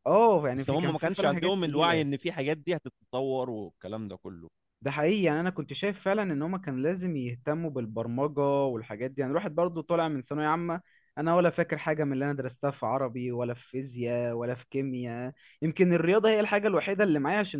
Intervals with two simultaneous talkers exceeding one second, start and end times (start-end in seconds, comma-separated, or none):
0.6-2.1